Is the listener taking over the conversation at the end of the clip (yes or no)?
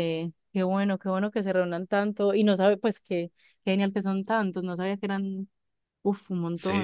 yes